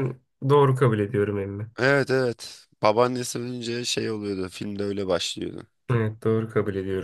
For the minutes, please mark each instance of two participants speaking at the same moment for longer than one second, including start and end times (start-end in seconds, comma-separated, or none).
none